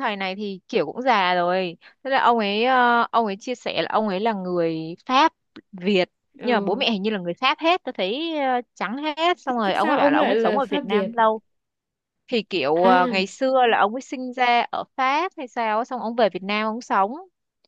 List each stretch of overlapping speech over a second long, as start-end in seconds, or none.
9.4-11.1